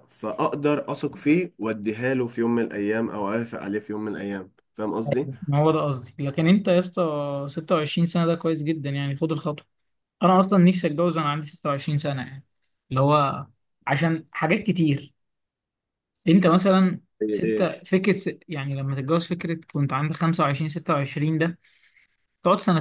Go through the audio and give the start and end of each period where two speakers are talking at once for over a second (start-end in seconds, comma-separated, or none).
none